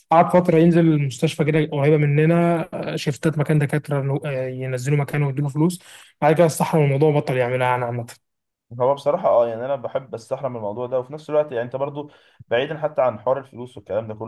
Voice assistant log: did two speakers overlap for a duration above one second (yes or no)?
no